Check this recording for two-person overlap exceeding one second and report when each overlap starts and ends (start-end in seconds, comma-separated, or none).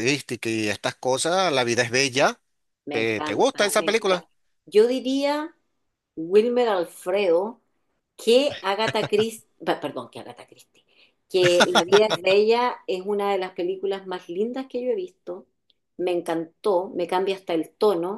2.9-4.3